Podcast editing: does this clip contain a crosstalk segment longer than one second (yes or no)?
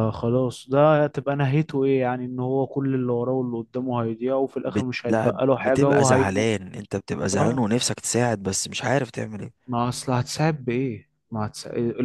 yes